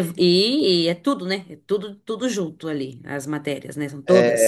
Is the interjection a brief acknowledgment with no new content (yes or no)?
no